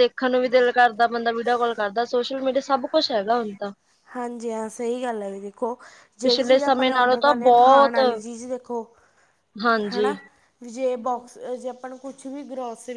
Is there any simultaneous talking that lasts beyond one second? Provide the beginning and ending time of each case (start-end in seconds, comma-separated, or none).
6.2-8.0